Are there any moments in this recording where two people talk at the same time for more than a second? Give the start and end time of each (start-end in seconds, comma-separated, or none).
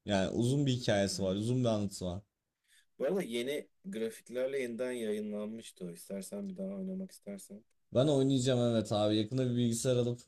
none